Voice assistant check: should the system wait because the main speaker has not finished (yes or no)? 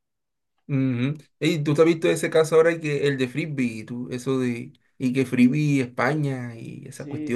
no